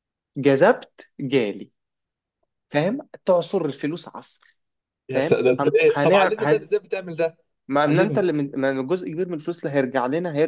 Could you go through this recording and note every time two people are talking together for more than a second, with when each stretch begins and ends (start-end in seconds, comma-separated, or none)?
5.1-6.7